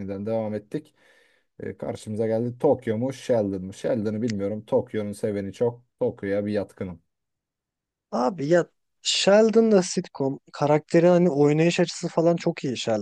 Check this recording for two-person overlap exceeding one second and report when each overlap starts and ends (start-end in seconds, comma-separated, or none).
none